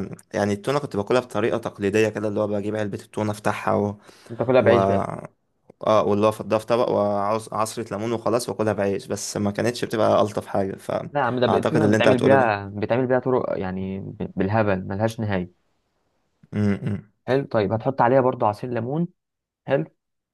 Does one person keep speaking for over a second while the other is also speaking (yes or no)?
yes